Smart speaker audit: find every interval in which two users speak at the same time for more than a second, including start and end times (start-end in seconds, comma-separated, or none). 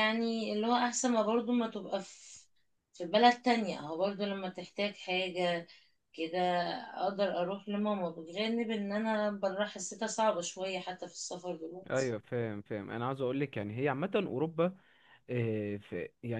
none